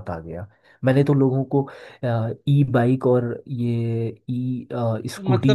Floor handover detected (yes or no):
yes